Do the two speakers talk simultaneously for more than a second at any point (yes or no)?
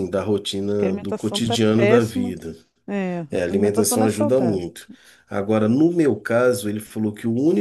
yes